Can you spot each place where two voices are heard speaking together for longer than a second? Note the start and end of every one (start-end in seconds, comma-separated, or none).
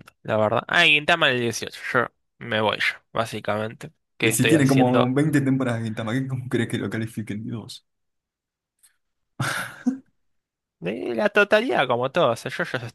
4.2-5.5